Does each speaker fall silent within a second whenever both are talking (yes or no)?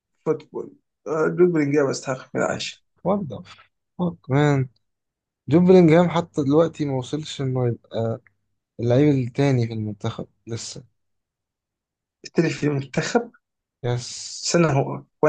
yes